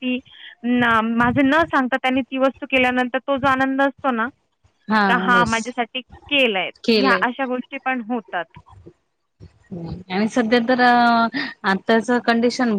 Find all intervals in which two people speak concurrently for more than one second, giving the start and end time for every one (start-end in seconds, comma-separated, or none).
none